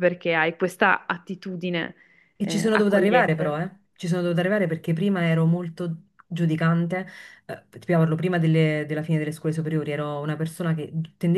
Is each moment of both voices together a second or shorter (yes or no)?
no